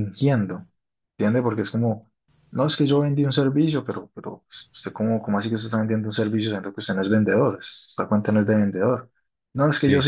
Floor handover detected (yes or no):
no